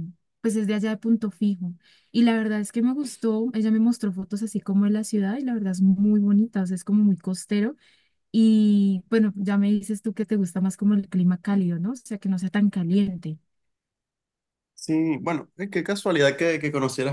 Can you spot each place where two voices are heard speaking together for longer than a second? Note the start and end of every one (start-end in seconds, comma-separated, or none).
none